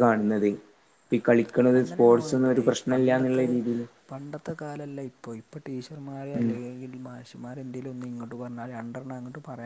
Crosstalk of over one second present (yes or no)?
yes